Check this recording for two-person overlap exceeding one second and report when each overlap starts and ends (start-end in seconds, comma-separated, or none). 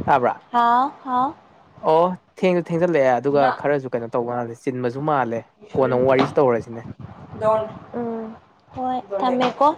none